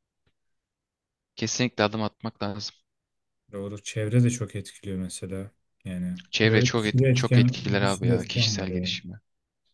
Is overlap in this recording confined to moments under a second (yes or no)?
no